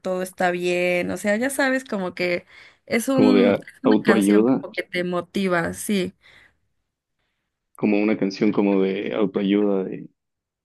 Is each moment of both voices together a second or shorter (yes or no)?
no